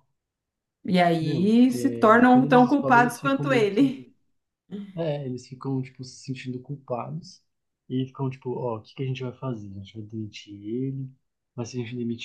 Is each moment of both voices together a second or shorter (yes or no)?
no